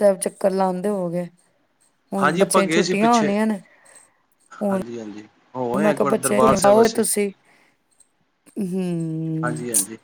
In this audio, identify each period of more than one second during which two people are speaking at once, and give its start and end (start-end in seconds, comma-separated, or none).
5.8-7.0